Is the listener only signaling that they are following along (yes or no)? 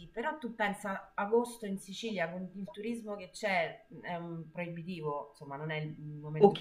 yes